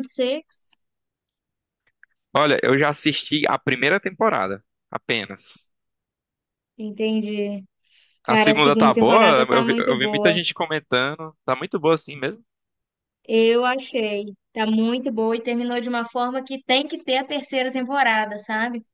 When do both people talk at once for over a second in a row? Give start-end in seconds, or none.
8.2-10.4